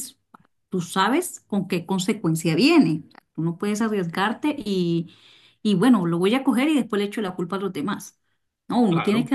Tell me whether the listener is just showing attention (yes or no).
yes